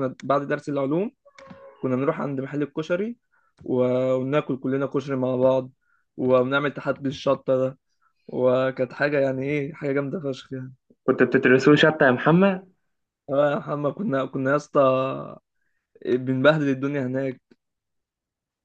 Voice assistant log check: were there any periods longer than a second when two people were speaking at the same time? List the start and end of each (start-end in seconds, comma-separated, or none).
none